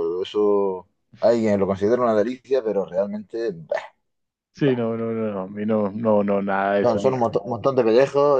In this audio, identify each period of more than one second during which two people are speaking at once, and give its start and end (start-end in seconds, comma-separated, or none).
none